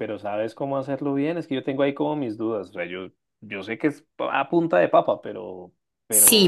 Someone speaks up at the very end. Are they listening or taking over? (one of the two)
taking over